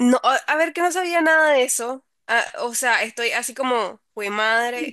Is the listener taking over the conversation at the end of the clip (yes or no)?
yes